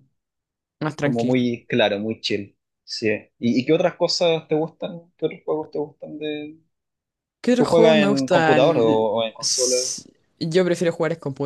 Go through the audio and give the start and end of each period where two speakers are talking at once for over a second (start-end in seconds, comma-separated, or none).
7.5-9.8